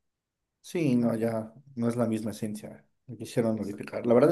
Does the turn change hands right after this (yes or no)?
no